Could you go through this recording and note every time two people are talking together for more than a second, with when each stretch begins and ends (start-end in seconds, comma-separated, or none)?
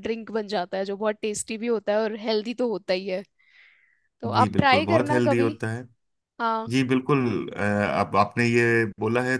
4.3-5.5